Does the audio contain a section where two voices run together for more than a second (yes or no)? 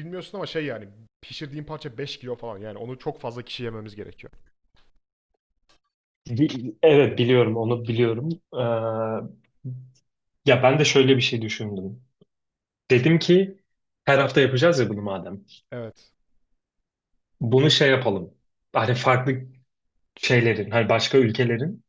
no